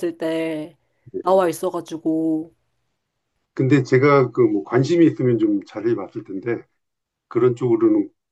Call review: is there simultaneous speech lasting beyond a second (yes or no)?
no